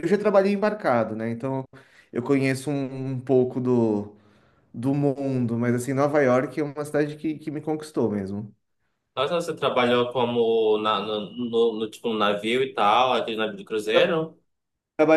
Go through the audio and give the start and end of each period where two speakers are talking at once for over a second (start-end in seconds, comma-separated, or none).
none